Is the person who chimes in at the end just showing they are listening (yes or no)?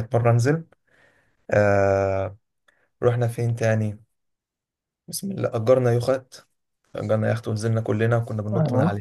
yes